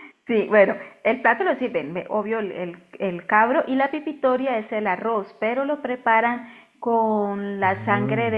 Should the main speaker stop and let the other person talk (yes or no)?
no